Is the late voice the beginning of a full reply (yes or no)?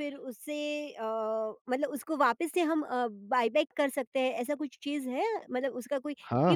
yes